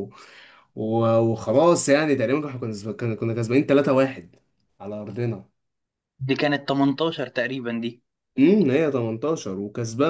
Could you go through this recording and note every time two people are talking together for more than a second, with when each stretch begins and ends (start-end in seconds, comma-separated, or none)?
none